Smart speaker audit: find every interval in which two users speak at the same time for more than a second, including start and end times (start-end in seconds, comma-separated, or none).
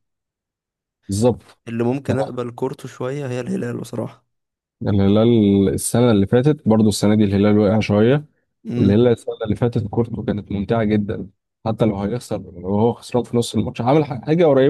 none